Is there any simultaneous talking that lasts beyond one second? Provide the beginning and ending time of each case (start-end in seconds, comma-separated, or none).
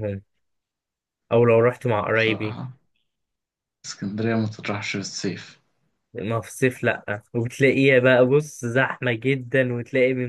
none